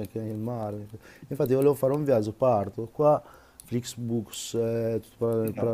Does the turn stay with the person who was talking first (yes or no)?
yes